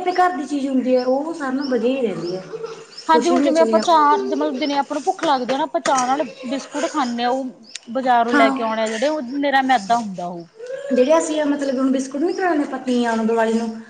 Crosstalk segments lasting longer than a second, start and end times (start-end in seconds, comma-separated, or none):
none